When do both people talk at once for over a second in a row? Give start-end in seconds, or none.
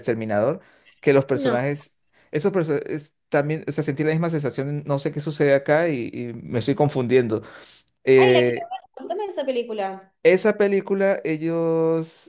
none